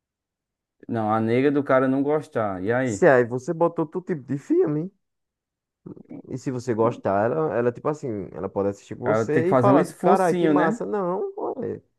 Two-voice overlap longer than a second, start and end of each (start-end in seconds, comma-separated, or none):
9.0-10.8